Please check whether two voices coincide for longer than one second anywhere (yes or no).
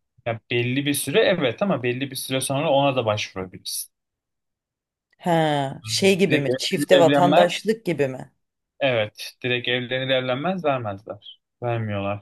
yes